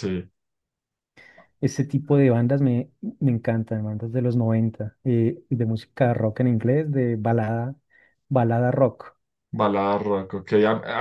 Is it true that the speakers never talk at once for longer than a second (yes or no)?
yes